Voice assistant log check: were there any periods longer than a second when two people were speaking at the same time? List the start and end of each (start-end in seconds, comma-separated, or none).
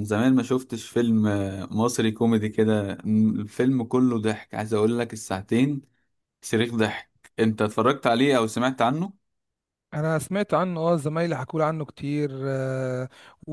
none